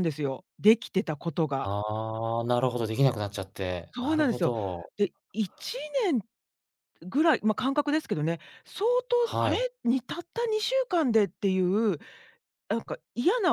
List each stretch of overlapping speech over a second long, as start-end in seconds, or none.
none